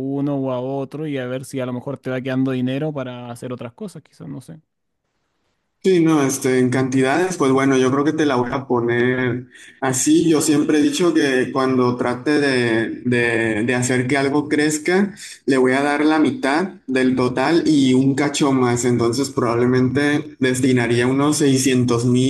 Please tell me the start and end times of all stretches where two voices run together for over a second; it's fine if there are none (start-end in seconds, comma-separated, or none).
none